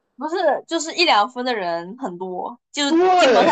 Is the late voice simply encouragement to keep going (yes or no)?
yes